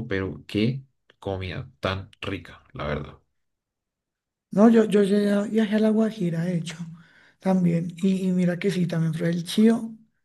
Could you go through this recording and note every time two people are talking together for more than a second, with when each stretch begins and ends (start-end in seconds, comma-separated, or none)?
none